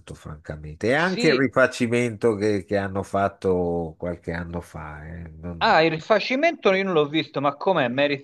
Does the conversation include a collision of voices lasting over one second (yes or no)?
no